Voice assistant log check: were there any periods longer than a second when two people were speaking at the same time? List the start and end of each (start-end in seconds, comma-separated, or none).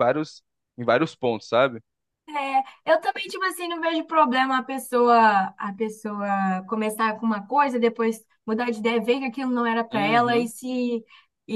none